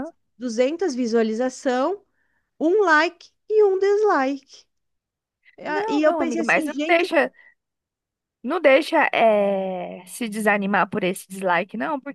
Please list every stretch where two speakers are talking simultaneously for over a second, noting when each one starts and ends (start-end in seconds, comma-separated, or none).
5.7-7.1